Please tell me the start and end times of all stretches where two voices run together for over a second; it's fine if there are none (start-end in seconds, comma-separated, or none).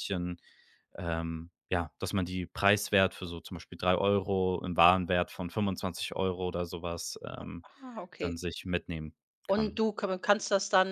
none